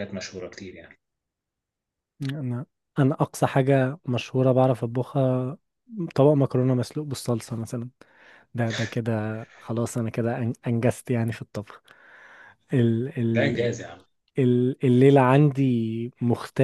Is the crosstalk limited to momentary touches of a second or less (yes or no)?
yes